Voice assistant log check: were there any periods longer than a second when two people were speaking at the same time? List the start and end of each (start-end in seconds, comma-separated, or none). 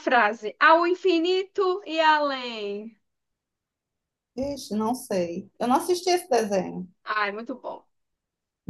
none